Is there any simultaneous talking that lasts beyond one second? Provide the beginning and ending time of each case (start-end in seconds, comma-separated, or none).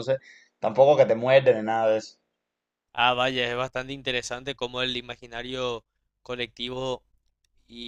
none